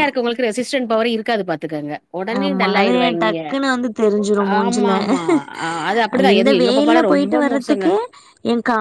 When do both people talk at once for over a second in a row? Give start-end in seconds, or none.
6.3-7.9